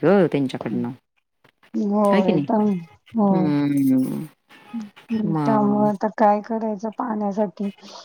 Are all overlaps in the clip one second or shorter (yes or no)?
yes